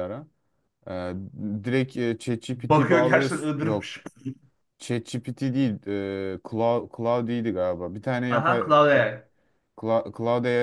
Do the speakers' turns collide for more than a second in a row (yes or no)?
yes